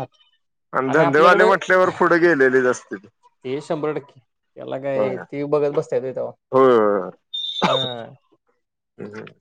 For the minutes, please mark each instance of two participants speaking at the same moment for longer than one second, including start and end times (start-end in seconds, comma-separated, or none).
none